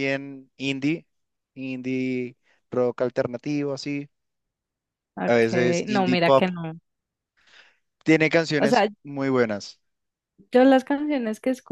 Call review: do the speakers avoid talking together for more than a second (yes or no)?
no